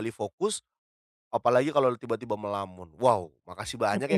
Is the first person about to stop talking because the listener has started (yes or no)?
no